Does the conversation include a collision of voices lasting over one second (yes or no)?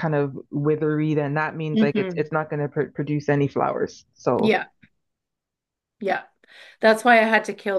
no